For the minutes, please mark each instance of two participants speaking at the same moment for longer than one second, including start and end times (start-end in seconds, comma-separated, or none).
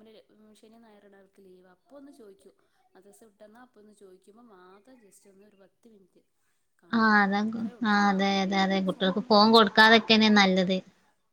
8.6-10.5